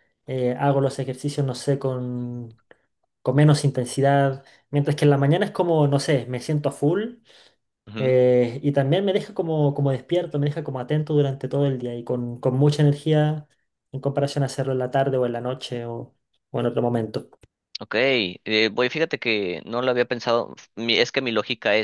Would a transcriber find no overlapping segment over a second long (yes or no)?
yes